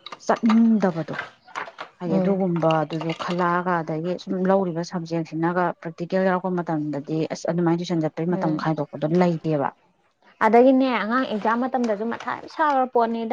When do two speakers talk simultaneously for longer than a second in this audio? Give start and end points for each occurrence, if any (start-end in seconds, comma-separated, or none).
none